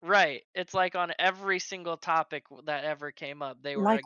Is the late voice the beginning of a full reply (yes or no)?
no